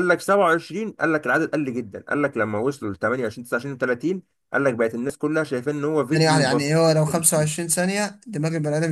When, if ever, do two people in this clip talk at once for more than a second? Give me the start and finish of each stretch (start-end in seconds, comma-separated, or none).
none